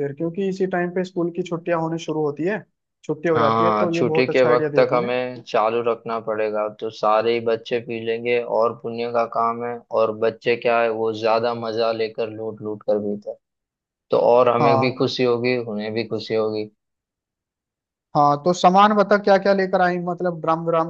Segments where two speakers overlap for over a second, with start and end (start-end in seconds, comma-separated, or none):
3.3-5.1